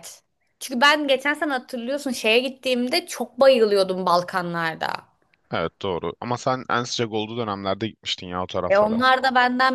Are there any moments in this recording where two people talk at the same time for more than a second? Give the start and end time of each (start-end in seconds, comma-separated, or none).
none